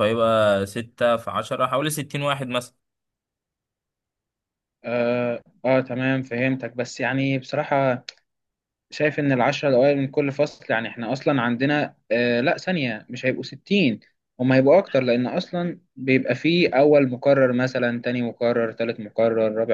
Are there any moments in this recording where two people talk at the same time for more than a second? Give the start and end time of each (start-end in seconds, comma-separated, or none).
none